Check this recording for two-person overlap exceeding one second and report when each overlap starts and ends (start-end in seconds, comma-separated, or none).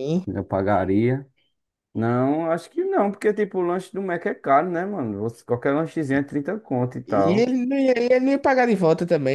none